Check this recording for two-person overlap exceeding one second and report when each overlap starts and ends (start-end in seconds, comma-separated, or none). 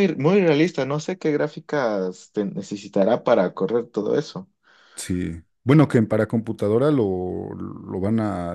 none